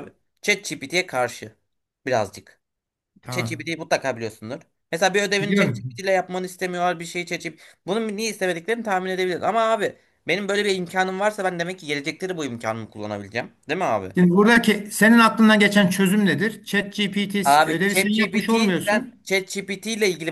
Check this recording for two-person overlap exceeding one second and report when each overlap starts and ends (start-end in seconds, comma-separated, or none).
17.4-19.2